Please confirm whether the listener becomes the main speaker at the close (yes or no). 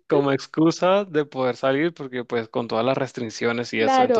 yes